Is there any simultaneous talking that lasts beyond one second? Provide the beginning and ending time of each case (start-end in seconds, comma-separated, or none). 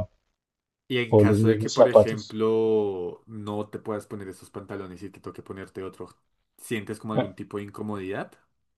1.1-2.4